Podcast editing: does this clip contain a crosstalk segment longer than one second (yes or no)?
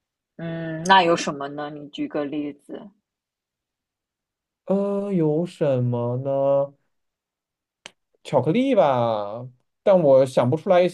no